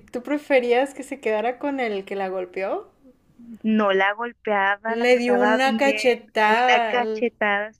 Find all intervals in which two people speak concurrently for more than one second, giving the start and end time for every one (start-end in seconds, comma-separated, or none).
5.0-7.3